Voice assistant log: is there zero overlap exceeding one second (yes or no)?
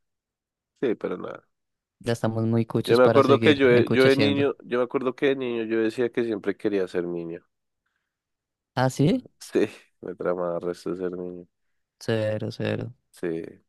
no